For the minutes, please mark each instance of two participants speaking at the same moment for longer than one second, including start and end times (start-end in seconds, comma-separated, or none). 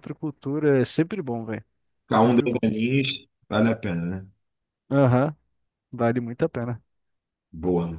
none